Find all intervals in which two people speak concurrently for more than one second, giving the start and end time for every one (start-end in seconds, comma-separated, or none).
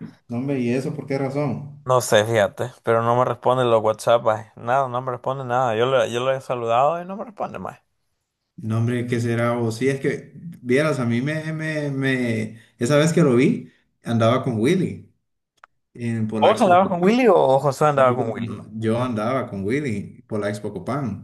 none